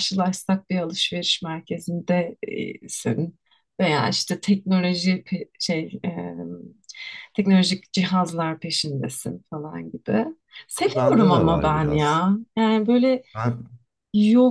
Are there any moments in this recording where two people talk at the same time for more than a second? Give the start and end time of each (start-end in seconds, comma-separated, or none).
10.8-12.2